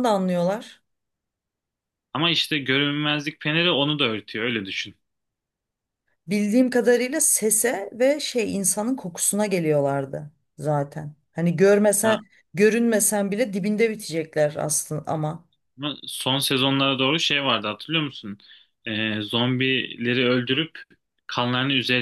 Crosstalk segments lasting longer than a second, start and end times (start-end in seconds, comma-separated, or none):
none